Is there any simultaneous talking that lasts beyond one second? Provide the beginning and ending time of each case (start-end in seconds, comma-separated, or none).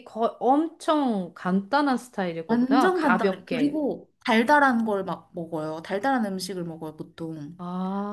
2.5-3.8